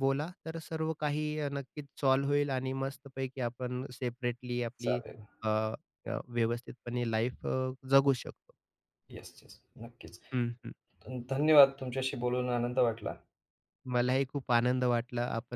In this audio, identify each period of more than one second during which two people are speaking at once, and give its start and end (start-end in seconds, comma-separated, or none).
none